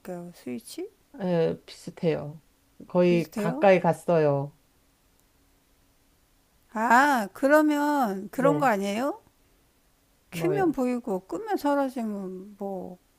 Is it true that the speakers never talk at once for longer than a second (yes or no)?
yes